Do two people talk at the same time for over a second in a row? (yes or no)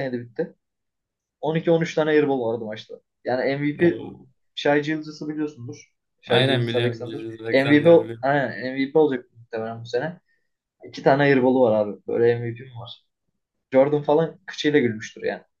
yes